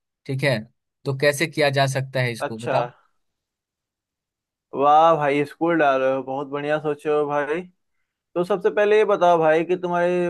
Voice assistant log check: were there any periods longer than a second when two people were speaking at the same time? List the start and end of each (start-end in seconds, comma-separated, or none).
none